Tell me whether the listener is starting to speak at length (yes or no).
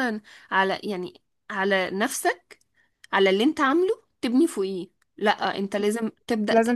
no